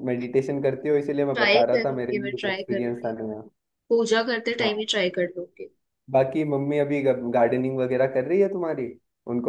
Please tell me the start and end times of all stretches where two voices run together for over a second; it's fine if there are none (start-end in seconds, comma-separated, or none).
1.3-3.1